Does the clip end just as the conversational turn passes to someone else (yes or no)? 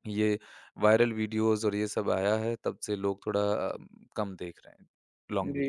yes